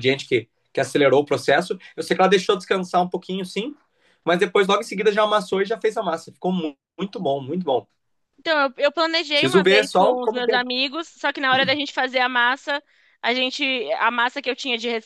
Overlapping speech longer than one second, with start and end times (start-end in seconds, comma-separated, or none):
9.3-10.7